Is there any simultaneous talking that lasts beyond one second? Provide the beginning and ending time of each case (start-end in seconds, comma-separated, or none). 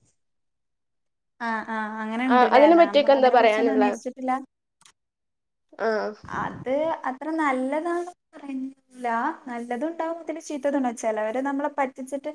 2.4-3.9